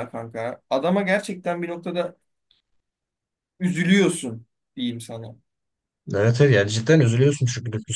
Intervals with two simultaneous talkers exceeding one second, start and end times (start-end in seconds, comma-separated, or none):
none